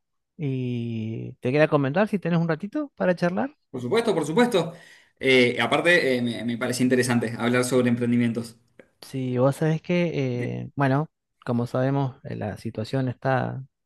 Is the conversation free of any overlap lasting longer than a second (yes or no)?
yes